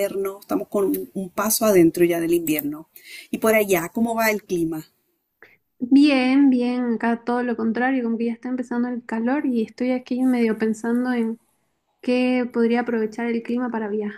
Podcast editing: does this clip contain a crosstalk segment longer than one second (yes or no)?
no